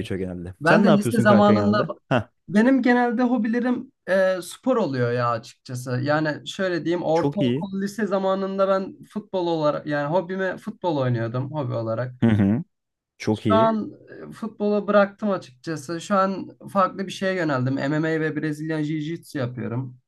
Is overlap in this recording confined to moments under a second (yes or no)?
no